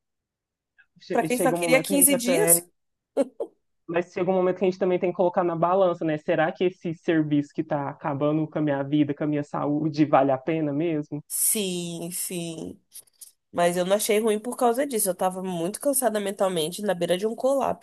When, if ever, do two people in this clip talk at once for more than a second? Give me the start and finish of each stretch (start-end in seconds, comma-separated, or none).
1.1-2.6